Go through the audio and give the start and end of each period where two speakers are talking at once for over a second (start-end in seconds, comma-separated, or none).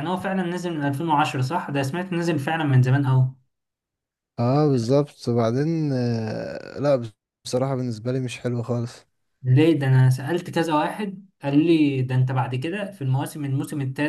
none